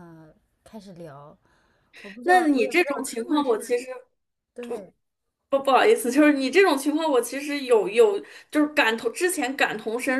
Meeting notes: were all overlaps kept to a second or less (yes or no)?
no